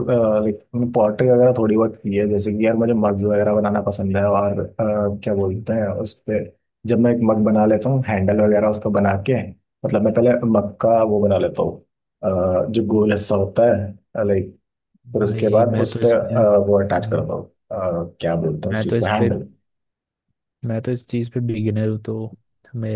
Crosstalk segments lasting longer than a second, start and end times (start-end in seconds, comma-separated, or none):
15.2-17.2